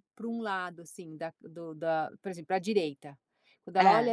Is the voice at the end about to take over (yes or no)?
no